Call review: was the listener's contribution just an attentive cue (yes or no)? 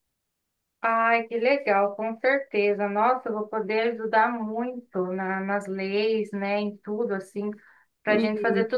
yes